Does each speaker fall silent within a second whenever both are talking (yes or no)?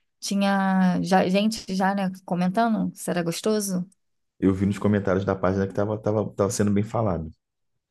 yes